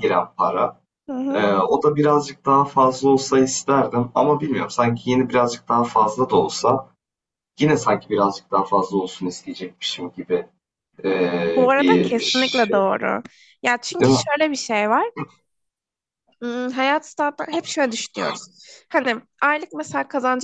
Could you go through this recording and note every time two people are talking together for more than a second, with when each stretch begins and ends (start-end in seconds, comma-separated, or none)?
11.6-12.8